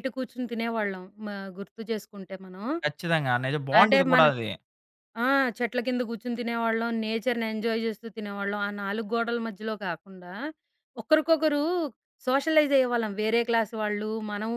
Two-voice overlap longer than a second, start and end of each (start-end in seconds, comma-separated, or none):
none